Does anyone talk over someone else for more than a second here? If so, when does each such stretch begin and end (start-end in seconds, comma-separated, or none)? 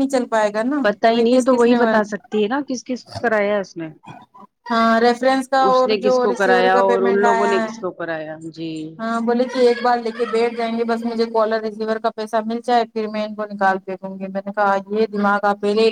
5.7-7.7